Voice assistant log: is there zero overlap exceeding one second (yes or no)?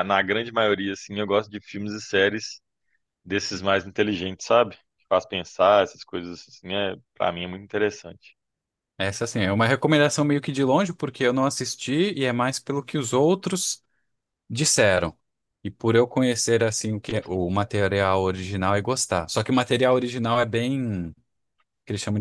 yes